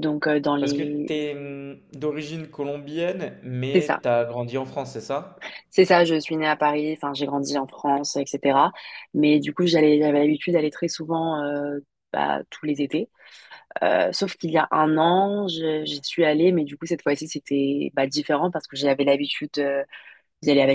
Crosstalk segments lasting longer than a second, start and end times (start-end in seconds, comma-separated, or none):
none